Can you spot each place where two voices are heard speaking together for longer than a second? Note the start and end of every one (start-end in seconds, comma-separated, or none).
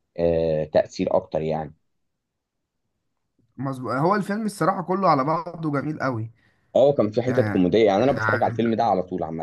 none